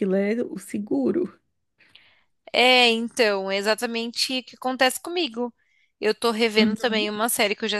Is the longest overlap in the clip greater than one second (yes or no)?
no